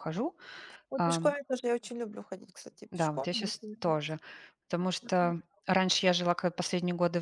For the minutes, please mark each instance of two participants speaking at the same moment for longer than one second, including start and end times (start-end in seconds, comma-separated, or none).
2.9-4.2